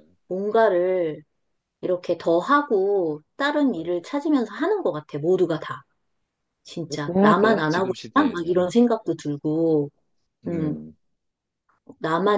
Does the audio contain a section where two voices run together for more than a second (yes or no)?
yes